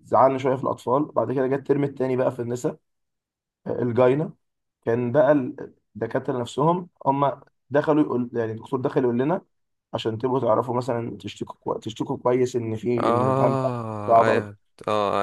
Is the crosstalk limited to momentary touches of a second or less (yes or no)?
no